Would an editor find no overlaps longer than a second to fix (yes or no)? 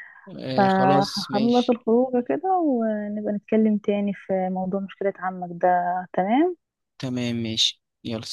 no